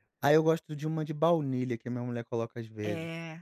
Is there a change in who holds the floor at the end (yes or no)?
yes